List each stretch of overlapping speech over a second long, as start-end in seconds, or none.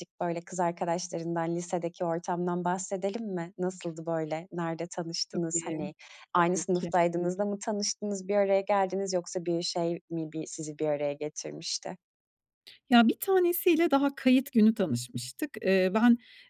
none